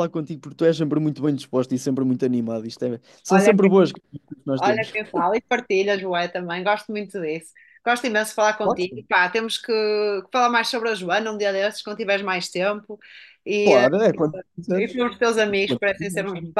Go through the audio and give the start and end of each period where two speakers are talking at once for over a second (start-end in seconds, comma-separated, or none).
none